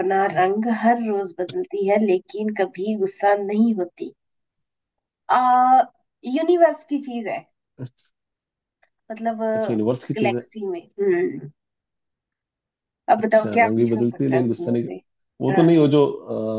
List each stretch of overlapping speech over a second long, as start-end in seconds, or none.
13.2-14.9